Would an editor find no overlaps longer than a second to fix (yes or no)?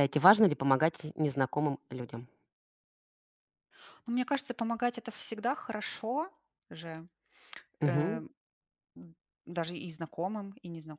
yes